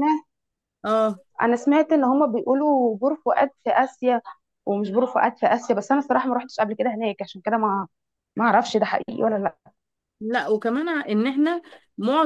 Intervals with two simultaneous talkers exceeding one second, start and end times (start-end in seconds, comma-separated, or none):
none